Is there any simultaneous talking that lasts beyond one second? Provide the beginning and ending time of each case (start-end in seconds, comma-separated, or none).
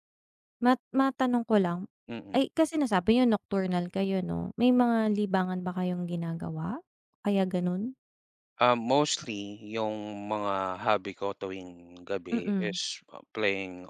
none